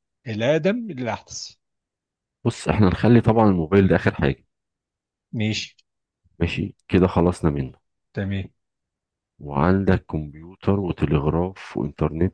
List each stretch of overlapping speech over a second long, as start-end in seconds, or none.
none